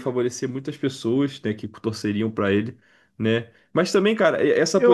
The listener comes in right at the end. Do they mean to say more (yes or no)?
no